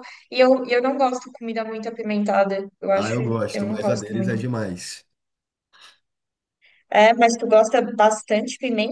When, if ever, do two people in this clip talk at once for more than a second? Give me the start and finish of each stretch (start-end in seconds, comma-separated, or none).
3.0-4.4